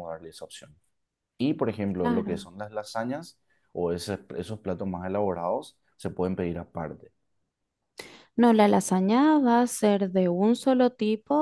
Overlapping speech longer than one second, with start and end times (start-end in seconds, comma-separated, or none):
none